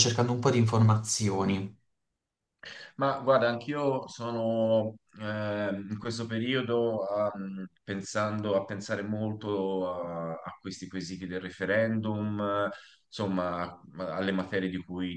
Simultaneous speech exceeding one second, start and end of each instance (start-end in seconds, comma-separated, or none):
none